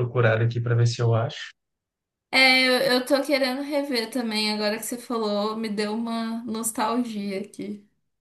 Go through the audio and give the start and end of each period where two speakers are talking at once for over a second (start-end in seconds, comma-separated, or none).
none